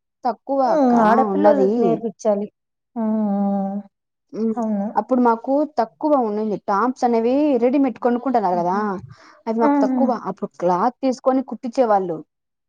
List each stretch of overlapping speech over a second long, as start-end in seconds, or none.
none